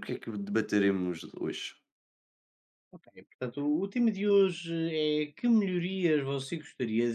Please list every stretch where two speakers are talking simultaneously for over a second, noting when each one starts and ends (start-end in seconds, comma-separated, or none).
none